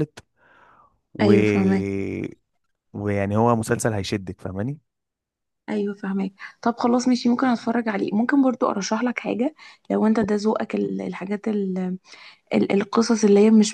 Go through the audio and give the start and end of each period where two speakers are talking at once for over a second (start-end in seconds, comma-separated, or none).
none